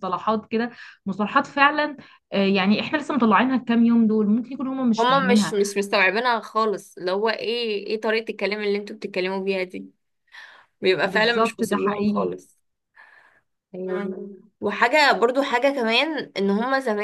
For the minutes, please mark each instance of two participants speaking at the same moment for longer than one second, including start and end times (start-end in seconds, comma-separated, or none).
11.0-12.4